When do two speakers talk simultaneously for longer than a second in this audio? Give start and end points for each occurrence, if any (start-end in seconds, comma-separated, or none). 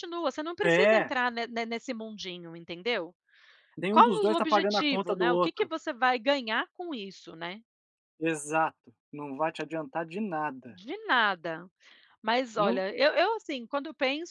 3.9-5.7